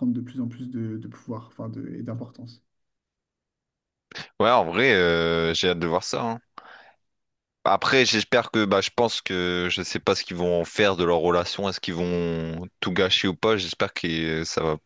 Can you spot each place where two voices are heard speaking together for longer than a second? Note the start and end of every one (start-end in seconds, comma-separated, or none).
none